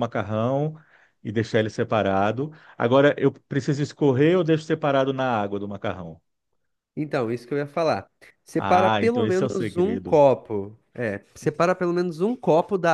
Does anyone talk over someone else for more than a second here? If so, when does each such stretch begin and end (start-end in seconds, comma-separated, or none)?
8.6-10.2